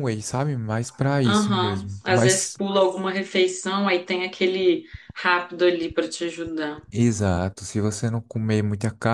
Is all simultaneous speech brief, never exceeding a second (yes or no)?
no